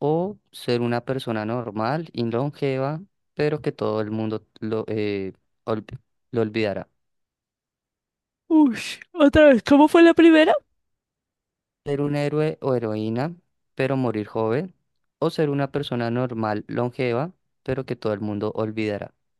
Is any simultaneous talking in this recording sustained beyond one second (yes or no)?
no